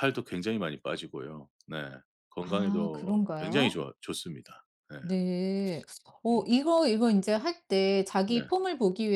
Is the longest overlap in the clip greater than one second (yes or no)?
yes